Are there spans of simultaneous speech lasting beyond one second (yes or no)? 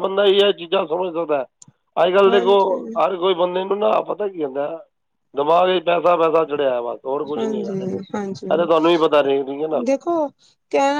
yes